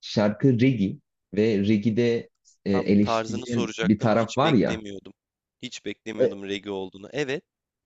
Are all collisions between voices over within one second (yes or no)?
no